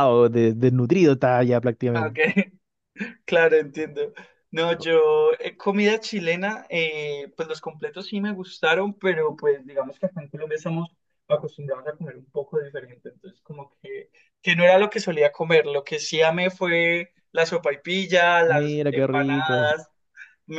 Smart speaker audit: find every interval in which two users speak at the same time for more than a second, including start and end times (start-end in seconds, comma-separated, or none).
18.5-19.7